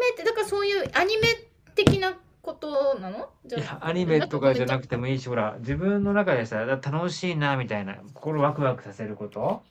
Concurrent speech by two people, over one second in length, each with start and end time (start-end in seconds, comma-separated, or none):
3.5-4.8